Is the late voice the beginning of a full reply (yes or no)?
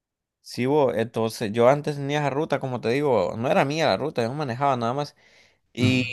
no